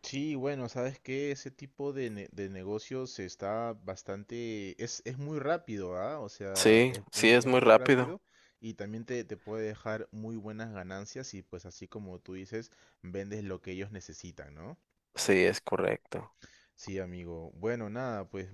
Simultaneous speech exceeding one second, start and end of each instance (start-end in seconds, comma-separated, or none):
6.5-8.2